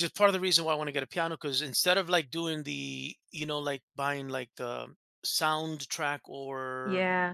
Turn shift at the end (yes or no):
no